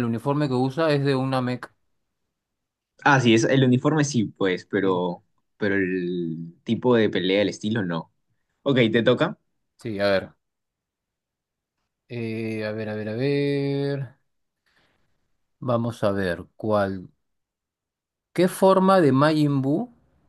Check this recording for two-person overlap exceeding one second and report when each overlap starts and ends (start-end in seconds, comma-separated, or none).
none